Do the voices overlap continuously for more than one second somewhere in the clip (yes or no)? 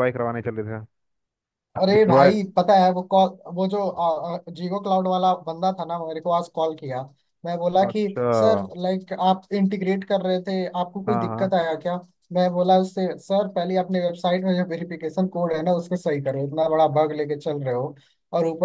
no